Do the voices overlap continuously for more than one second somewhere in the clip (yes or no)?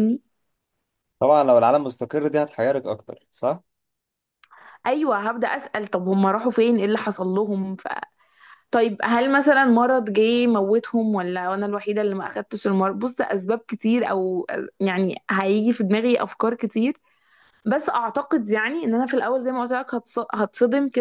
no